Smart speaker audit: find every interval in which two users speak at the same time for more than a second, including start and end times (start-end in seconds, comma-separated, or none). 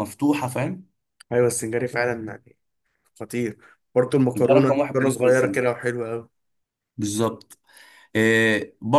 4.4-5.6